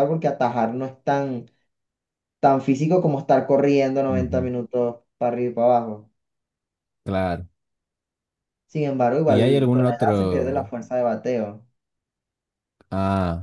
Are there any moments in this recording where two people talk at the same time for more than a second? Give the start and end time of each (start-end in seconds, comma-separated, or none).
9.2-10.7